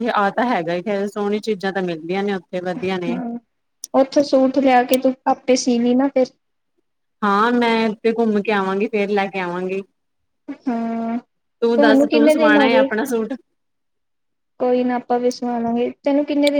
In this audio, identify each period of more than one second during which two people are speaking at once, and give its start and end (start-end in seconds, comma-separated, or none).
11.6-12.9